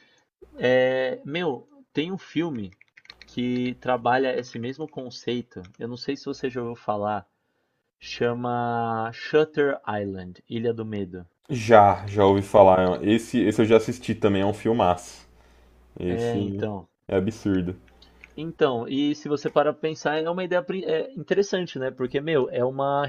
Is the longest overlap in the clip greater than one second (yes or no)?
no